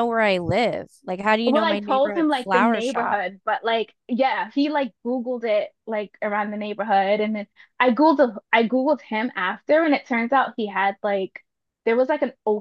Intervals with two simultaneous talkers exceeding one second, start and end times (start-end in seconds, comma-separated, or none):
1.4-3.2